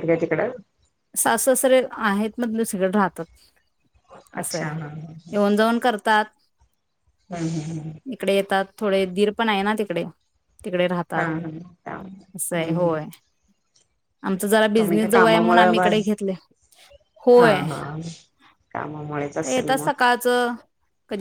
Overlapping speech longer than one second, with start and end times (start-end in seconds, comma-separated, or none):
14.8-16.1